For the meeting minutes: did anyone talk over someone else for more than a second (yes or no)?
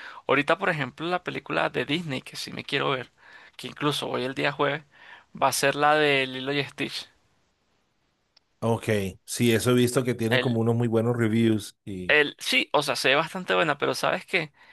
no